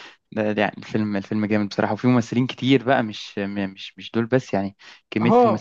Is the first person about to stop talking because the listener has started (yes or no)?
yes